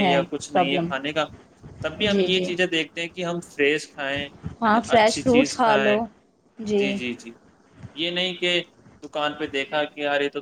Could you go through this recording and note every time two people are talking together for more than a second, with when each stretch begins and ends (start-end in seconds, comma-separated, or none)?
4.7-6.0